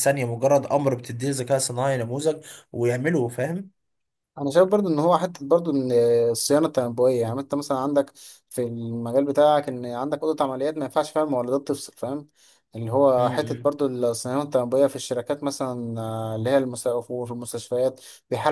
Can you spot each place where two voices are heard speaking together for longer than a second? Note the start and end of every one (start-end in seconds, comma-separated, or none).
none